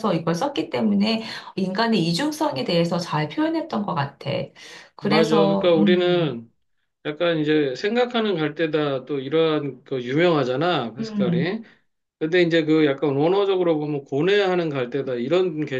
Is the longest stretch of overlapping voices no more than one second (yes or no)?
no